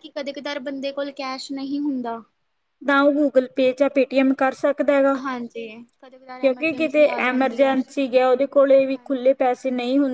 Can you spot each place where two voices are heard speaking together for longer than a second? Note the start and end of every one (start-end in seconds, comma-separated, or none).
6.4-7.7